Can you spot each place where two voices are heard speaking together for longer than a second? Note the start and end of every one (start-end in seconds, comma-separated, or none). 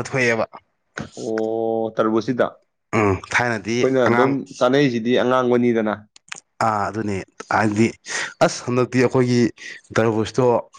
2.9-4.3